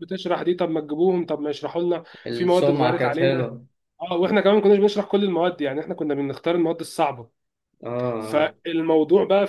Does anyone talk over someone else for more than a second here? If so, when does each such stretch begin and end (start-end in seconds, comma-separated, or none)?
2.3-3.5